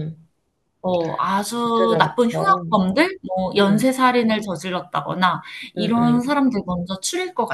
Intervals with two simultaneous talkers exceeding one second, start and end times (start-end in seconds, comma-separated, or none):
1.6-2.8